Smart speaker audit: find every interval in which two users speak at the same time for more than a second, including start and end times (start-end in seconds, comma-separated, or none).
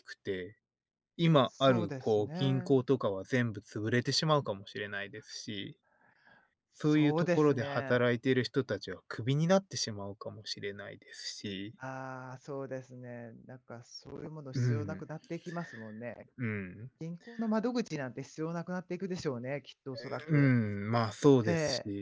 1.4-2.8, 6.8-8.0